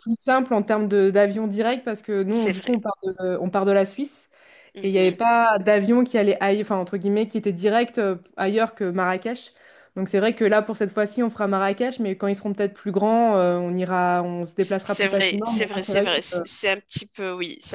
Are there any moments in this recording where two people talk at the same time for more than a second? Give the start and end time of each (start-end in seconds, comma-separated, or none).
14.8-16.4